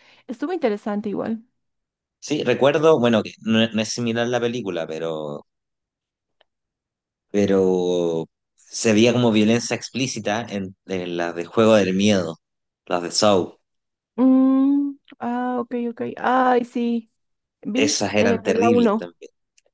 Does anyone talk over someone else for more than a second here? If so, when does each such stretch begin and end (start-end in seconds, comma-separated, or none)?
17.7-19.1